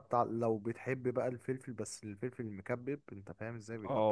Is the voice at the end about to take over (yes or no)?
yes